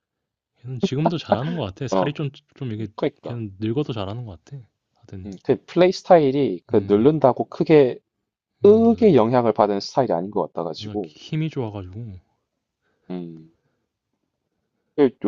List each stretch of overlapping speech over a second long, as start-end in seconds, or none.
none